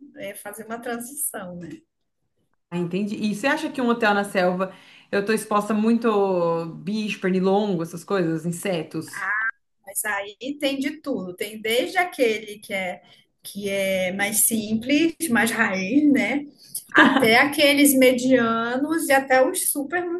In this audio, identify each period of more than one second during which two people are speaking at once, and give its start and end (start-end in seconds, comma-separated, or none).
none